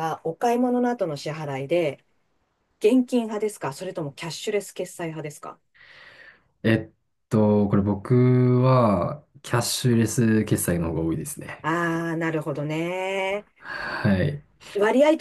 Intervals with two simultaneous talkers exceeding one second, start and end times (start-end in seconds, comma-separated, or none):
none